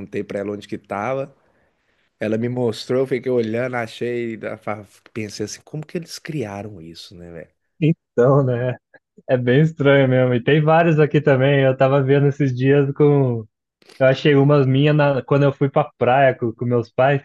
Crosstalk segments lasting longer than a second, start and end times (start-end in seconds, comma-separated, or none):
none